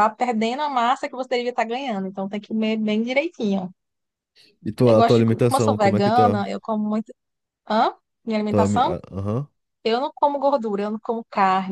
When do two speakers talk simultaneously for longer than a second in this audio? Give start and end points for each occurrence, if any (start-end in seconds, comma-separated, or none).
4.8-6.4